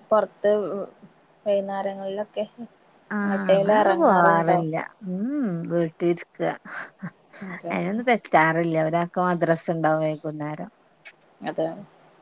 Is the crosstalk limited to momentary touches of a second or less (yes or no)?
no